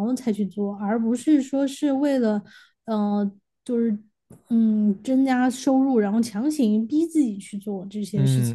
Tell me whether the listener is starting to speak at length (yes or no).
yes